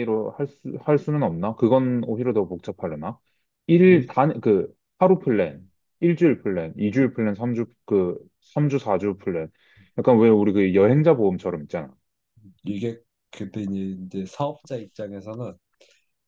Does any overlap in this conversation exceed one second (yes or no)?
no